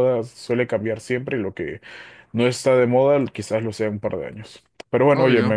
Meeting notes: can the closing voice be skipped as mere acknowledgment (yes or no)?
yes